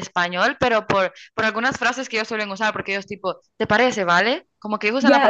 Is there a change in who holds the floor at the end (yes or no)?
yes